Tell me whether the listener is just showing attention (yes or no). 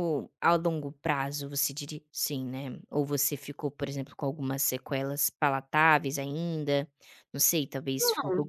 yes